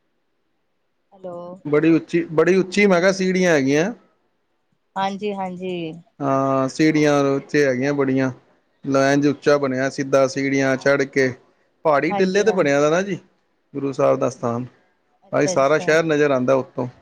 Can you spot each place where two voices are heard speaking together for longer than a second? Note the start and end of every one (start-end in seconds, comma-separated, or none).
none